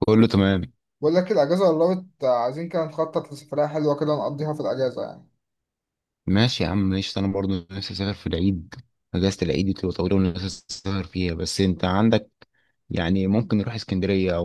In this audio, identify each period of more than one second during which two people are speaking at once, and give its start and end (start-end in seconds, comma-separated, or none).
none